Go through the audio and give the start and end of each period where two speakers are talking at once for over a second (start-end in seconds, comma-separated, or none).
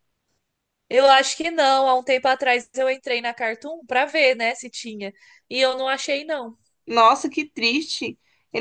none